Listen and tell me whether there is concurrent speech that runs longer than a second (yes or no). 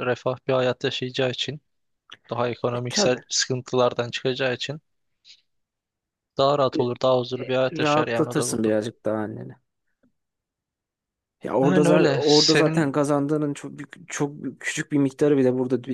yes